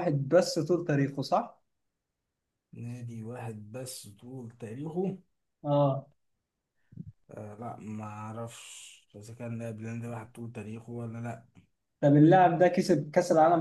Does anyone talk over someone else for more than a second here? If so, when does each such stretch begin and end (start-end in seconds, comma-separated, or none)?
none